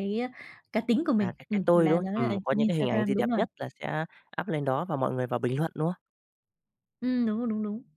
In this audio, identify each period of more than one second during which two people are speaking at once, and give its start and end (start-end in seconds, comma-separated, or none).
1.2-3.4